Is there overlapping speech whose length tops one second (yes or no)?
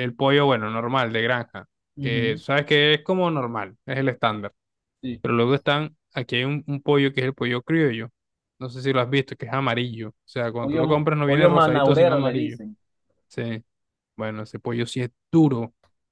yes